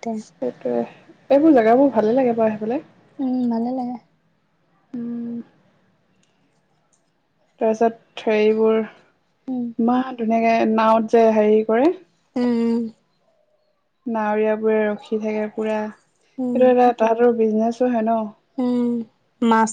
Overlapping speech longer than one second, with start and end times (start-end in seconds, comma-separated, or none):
none